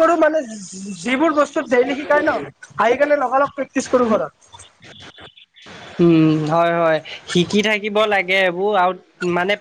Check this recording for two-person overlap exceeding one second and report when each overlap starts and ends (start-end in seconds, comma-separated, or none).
none